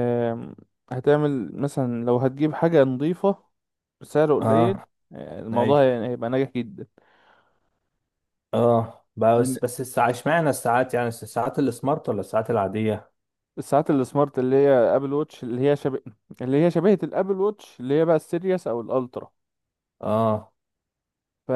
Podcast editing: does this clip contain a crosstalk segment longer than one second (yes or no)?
no